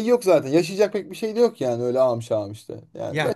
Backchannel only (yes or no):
no